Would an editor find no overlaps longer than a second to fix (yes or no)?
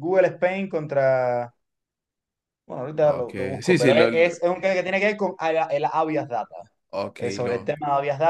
no